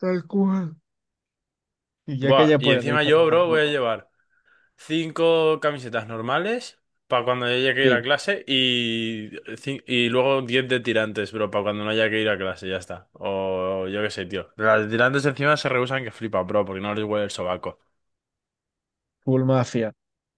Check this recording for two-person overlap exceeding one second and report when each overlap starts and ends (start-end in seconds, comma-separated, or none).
2.2-3.8